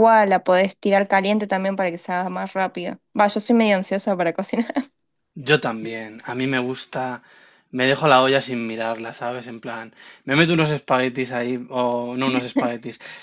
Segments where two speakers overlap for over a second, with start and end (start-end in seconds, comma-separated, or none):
none